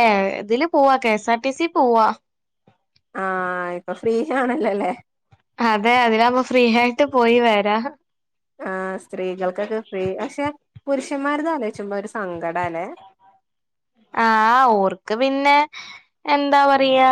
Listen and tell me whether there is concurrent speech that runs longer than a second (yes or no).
no